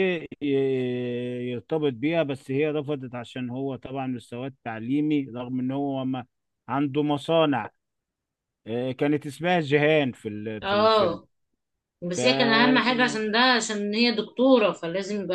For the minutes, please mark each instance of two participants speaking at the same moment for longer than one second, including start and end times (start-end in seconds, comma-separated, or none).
none